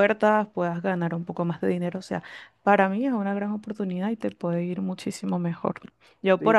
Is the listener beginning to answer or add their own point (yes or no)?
yes